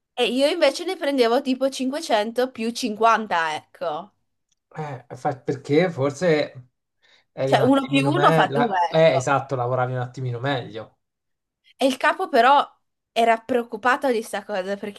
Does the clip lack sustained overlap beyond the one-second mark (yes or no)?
no